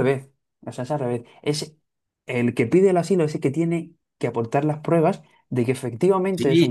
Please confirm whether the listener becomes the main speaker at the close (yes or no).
yes